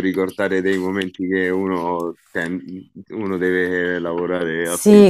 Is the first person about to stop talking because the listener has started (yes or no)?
yes